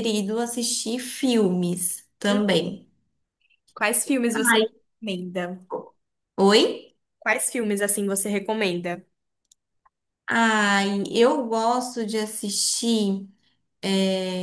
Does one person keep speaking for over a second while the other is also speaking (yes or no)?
no